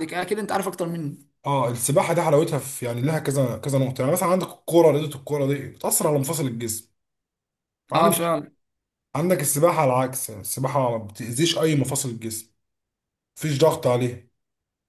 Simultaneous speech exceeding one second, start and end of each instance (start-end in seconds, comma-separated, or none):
none